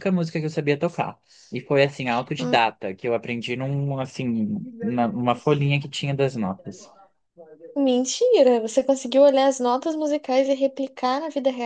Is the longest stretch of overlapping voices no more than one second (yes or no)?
yes